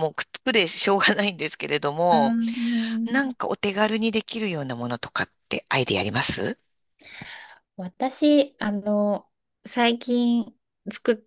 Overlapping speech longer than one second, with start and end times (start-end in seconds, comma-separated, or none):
none